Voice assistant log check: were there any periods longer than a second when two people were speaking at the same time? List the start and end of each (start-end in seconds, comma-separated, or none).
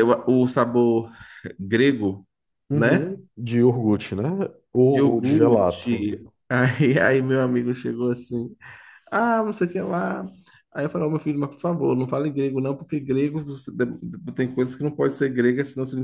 4.9-6.2